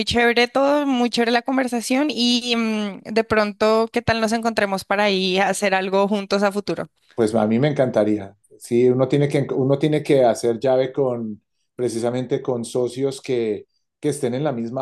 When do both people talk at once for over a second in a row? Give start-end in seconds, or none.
none